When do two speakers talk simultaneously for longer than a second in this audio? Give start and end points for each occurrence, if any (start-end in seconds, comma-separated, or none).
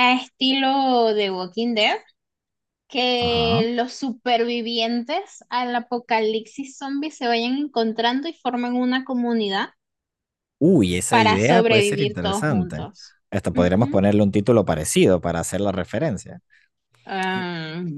11.1-12.9